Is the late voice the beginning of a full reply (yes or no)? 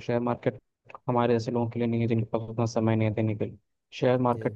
no